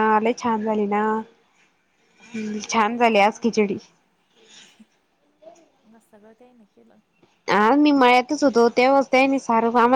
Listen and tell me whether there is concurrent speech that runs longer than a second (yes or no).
yes